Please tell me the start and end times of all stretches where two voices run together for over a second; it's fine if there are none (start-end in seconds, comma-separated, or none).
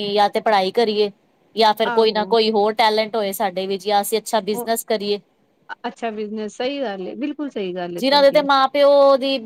none